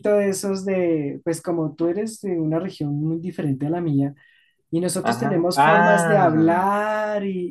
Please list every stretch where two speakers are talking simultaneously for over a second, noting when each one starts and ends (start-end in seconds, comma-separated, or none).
5.0-6.6